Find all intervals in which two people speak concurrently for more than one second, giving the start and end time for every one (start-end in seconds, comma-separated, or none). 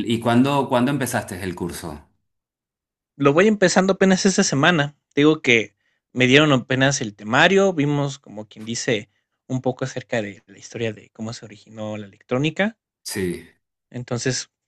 none